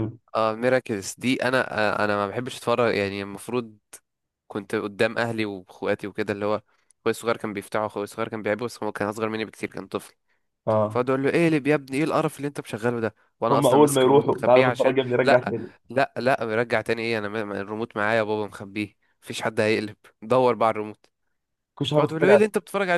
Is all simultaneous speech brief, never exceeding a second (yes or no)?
no